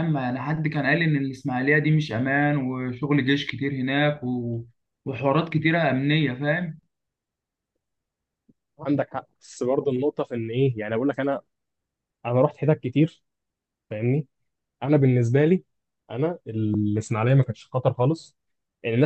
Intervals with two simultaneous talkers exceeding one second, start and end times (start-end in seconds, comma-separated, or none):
none